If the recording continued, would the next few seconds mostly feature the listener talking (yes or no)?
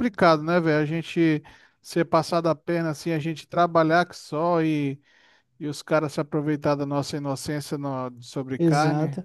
yes